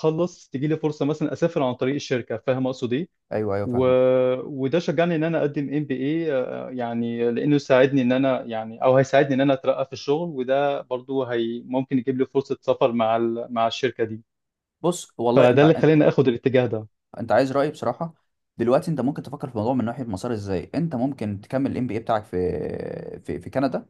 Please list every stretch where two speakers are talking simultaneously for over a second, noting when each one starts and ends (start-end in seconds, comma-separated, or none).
none